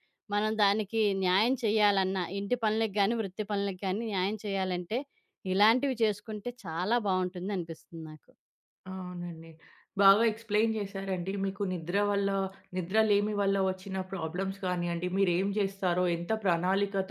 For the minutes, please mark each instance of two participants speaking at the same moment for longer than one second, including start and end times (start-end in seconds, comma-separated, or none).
none